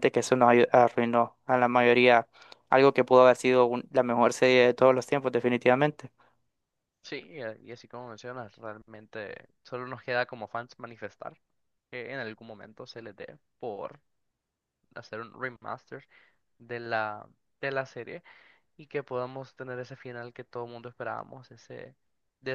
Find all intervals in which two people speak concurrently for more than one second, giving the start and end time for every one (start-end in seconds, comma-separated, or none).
none